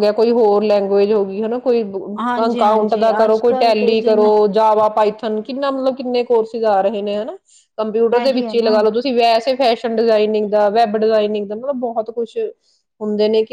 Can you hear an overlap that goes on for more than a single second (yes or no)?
yes